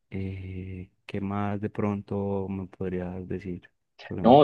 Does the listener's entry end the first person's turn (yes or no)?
yes